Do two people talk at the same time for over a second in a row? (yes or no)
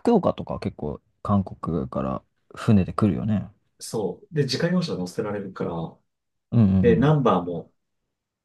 no